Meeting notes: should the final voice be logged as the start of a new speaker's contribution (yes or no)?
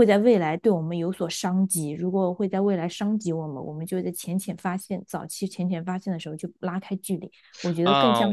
yes